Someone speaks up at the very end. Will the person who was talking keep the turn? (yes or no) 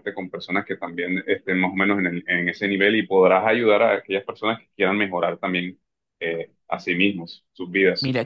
no